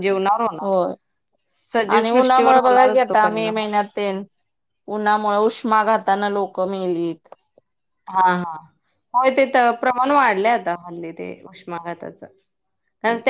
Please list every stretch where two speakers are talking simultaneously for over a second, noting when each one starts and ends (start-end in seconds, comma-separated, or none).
1.9-3.5